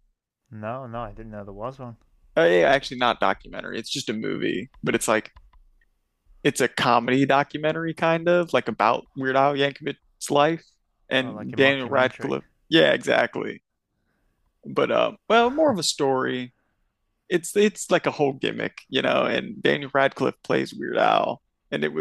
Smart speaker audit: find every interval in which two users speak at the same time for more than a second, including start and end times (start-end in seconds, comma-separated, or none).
11.2-12.4